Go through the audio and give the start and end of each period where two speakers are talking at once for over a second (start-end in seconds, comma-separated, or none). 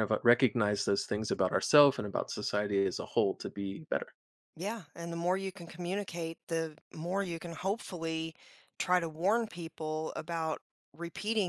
none